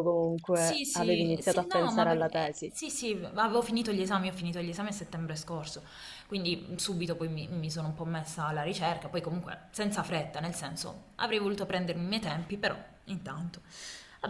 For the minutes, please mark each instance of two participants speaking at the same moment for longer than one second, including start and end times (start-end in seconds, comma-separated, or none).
0.5-2.8